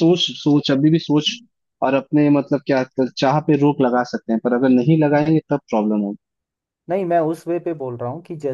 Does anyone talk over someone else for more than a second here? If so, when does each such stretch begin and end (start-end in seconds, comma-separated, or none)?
none